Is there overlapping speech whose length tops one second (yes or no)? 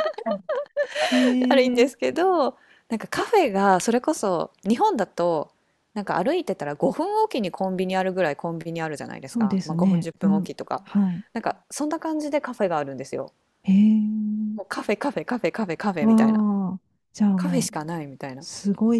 yes